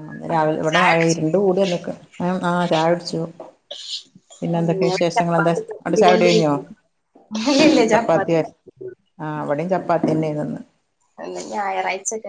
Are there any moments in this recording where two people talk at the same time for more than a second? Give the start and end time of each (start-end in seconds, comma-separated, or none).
4.9-6.5